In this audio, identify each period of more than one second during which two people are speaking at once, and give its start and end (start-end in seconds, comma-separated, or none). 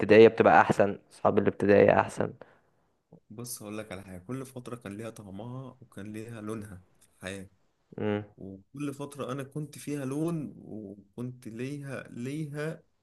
none